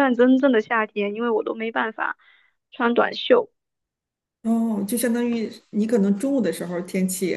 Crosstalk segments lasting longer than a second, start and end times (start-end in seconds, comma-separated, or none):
none